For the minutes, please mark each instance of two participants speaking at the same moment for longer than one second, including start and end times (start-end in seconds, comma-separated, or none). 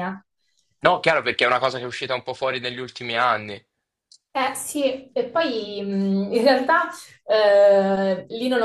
none